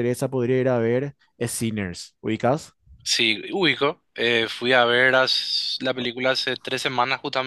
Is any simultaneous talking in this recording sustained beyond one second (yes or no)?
no